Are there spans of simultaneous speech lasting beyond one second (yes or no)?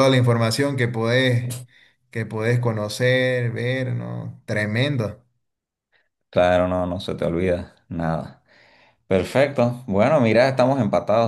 no